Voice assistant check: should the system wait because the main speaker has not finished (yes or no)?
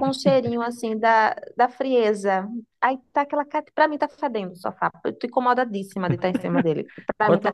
no